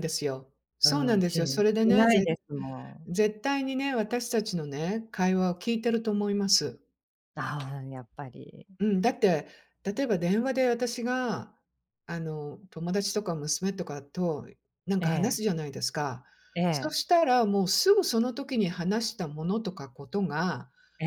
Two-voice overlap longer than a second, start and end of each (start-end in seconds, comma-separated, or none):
0.9-2.3